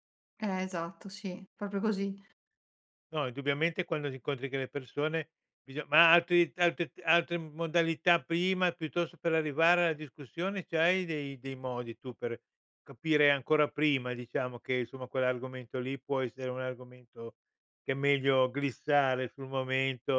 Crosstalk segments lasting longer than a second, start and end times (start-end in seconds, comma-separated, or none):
none